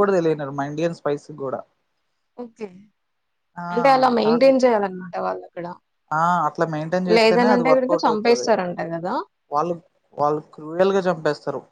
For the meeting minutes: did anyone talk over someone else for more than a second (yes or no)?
yes